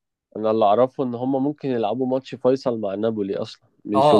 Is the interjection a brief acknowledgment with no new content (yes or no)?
no